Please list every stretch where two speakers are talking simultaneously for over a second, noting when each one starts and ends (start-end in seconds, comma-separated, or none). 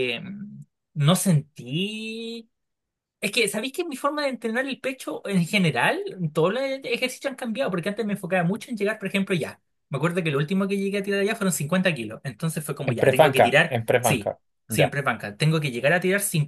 12.9-15.0